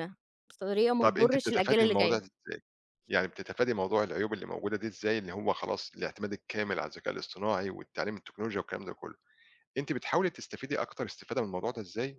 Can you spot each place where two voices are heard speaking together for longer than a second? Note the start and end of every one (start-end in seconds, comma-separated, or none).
1.0-2.2